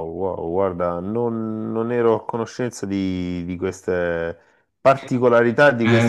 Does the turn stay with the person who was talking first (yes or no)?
no